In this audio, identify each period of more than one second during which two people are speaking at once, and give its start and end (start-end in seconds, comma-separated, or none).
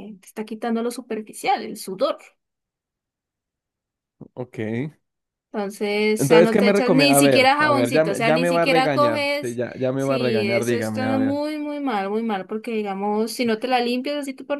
6.2-11.4